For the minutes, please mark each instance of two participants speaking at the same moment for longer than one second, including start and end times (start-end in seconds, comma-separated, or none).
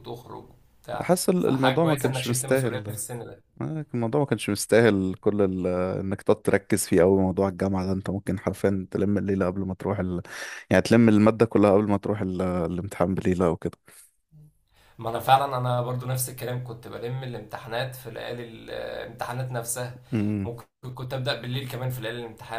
1.0-3.0